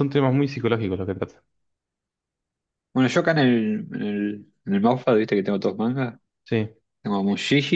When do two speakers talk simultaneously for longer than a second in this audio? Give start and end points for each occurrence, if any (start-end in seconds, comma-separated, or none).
none